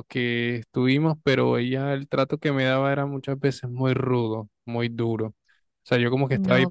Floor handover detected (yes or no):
no